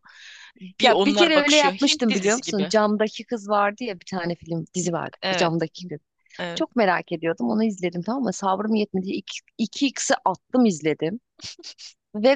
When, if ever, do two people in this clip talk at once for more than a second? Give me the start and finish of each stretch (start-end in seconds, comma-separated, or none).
0.8-2.7